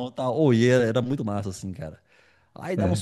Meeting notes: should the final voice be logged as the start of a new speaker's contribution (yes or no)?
no